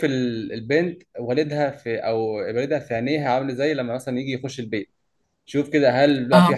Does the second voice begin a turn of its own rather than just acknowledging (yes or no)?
no